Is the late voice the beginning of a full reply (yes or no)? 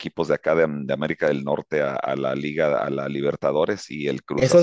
yes